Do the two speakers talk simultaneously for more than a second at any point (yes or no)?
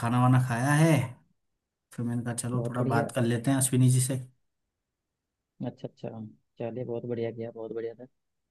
no